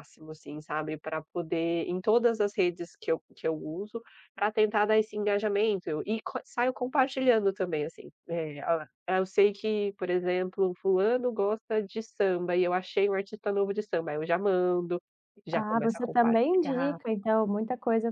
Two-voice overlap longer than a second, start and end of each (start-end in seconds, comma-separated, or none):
15.5-17.0